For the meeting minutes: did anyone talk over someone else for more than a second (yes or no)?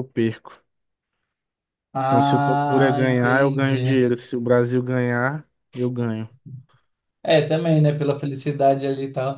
yes